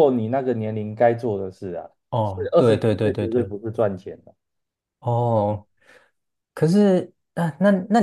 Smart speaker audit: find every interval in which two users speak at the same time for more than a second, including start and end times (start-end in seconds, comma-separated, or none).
2.1-3.5